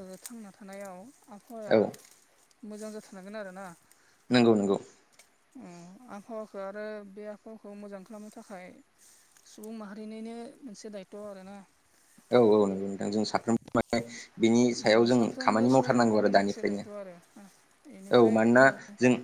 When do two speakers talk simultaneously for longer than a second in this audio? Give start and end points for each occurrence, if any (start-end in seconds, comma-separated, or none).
15.2-16.9